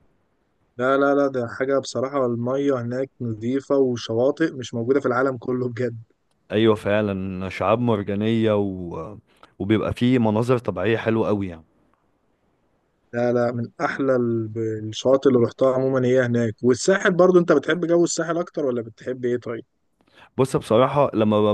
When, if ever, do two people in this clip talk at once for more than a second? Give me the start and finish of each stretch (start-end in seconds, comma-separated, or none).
none